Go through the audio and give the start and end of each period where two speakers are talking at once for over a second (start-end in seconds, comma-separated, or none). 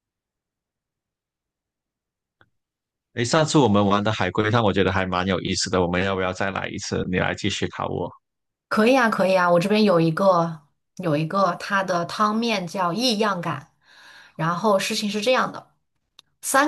none